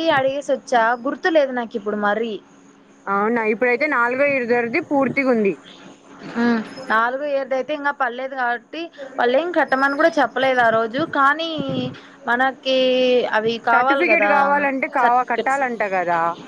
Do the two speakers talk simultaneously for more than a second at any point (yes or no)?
no